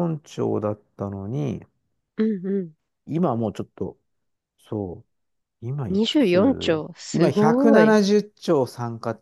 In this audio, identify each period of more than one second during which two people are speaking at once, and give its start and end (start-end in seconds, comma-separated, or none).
5.9-8.0